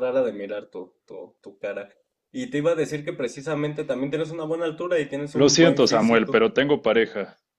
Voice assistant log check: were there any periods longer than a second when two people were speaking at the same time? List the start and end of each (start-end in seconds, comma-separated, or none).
5.3-6.5